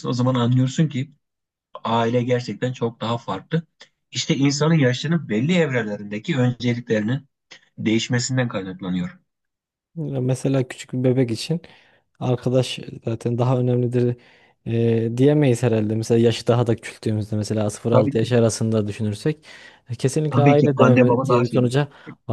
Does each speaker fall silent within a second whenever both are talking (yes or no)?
no